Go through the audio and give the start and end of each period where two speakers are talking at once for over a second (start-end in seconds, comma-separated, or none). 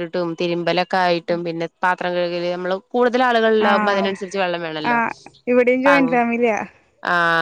3.7-4.9